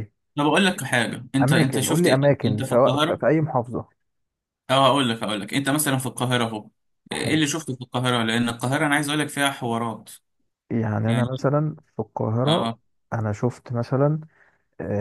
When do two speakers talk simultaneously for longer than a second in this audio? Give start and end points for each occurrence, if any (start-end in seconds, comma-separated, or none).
1.4-3.2